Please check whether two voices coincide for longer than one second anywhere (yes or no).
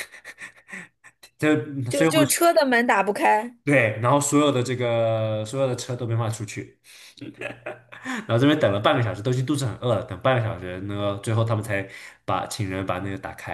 no